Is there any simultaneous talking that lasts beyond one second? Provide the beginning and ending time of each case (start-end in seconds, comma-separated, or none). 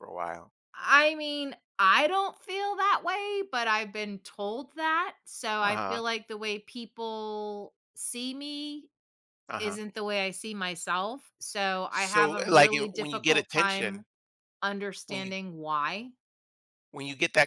11.9-14.0